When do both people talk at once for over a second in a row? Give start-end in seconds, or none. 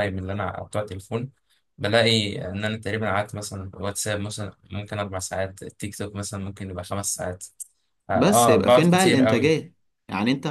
8.1-9.5